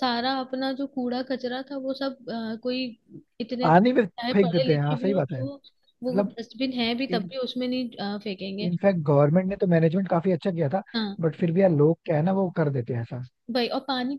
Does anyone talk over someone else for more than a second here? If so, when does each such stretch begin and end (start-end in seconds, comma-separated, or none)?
3.6-5.4